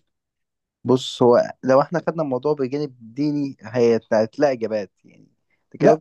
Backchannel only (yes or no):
no